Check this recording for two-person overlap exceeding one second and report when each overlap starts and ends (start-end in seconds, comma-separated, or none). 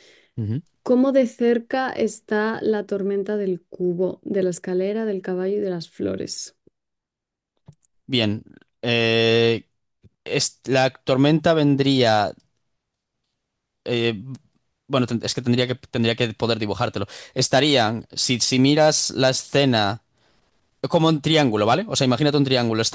none